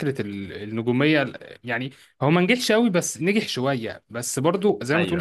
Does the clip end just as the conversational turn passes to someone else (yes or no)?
no